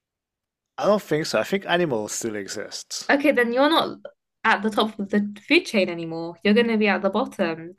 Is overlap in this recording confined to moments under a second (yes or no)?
yes